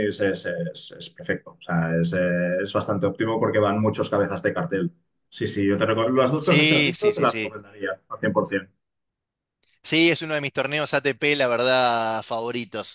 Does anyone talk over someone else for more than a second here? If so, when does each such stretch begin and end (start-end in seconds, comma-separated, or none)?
6.4-7.6